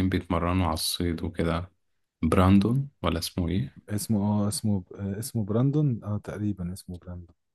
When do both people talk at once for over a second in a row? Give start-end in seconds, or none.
none